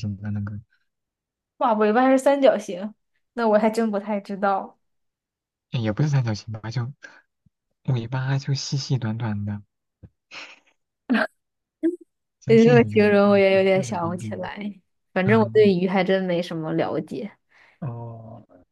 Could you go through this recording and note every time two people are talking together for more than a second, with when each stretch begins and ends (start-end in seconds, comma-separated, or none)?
12.5-14.5